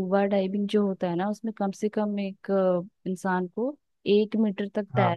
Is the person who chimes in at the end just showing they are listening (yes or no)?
yes